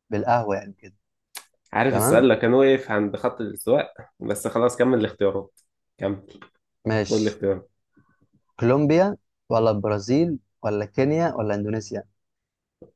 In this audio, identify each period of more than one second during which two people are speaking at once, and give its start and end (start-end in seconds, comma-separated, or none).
none